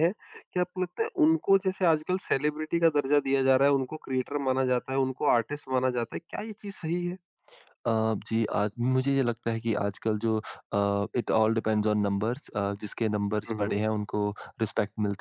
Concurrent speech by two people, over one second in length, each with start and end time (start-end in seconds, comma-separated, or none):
none